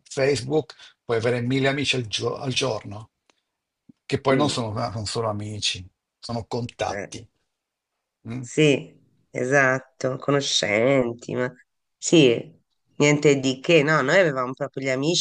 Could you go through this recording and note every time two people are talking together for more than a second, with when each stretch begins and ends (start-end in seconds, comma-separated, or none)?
none